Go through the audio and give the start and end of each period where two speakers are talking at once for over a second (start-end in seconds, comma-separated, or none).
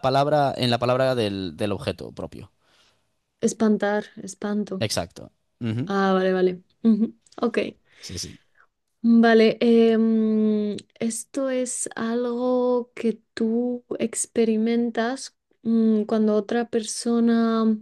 none